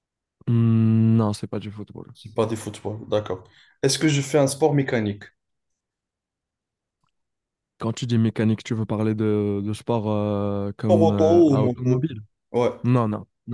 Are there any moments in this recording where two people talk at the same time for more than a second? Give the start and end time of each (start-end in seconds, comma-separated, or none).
10.8-12.1